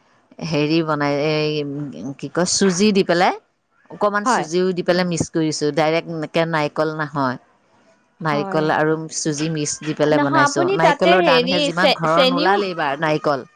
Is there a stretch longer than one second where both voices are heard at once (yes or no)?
yes